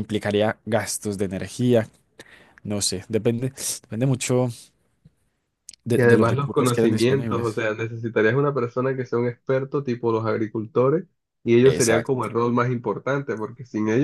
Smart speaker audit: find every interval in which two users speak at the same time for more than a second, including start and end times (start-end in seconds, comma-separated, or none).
6.0-7.6